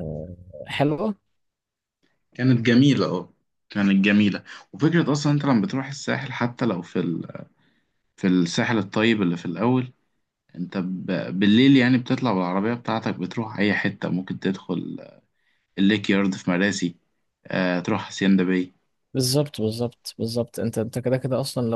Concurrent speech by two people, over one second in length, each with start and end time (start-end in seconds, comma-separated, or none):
none